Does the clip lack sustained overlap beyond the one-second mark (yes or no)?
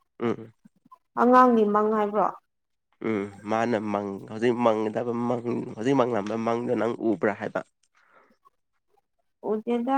yes